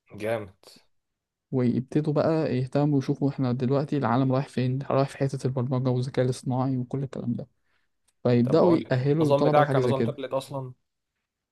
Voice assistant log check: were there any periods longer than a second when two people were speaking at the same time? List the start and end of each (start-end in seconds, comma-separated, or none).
8.4-10.1